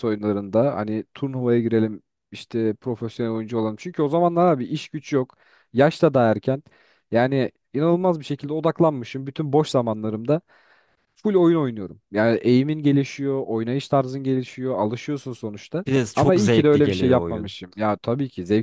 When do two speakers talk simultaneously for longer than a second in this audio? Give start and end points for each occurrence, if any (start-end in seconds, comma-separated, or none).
15.9-17.5